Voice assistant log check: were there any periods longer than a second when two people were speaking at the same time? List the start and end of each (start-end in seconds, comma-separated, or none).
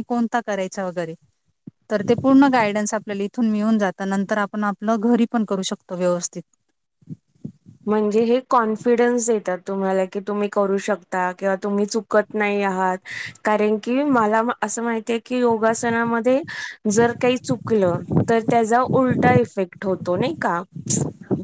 none